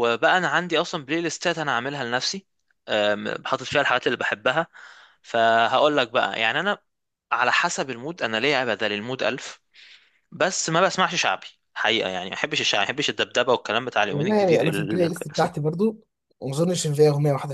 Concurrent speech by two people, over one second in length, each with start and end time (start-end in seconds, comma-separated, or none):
14.1-15.5